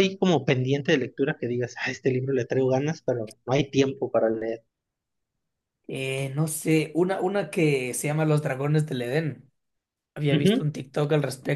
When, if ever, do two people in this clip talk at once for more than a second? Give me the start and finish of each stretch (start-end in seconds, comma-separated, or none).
none